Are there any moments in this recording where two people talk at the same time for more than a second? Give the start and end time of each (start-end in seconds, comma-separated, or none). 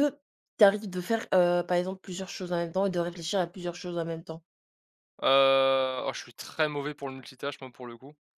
none